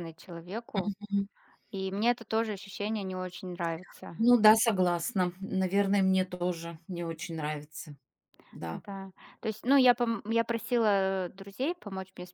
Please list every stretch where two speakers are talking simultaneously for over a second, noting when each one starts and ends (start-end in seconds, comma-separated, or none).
none